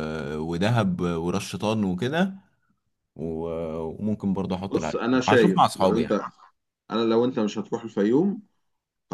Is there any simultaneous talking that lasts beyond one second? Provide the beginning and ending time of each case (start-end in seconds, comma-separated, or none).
4.7-6.2